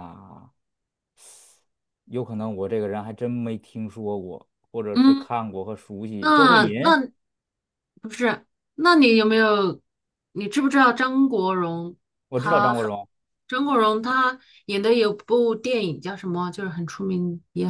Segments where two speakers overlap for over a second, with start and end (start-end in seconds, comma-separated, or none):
none